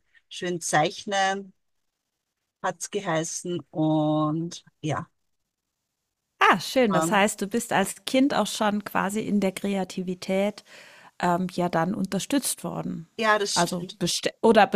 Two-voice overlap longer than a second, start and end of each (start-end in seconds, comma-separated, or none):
none